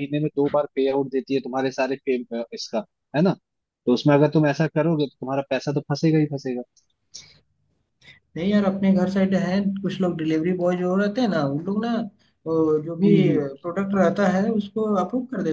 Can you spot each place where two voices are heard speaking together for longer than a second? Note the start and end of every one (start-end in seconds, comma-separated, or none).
none